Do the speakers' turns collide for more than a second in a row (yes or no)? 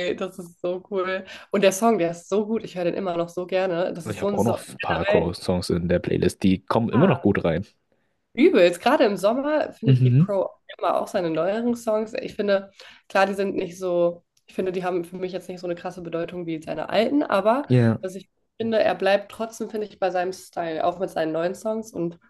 yes